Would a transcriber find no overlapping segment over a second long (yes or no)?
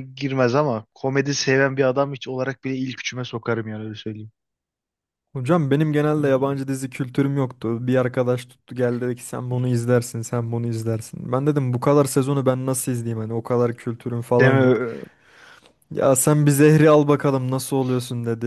yes